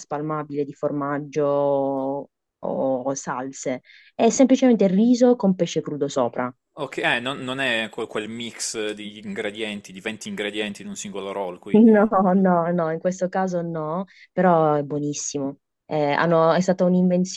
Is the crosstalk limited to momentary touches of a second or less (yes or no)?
yes